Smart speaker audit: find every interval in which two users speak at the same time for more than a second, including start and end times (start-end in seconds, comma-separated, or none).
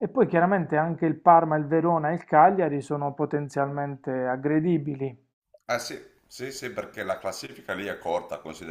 none